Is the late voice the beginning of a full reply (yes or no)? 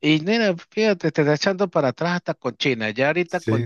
no